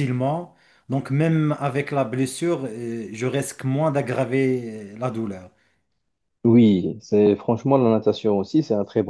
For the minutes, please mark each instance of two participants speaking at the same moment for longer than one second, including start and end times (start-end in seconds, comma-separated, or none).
none